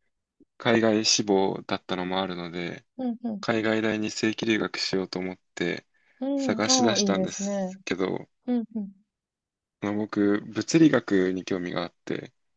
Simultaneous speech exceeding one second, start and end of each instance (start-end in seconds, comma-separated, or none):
6.3-7.7